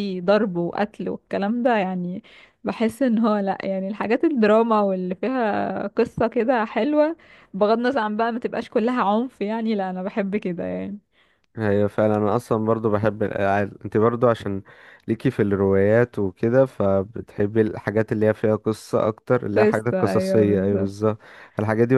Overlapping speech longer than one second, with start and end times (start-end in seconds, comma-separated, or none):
19.6-20.9